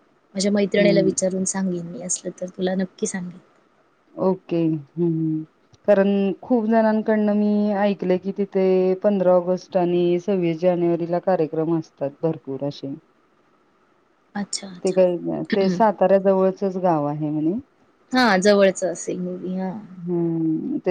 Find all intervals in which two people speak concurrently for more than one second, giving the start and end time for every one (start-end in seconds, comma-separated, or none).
none